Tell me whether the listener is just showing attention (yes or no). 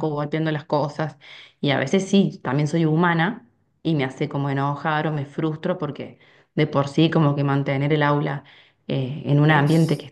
yes